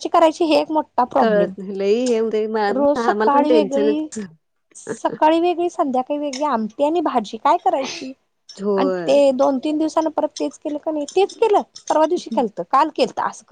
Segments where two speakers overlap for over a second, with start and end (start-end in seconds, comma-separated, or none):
2.8-4.1